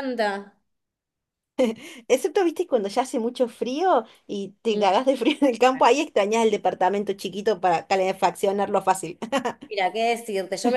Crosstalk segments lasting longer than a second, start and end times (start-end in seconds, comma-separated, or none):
none